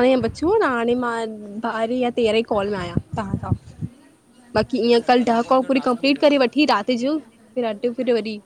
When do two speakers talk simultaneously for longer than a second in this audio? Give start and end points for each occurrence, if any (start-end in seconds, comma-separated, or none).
4.9-6.9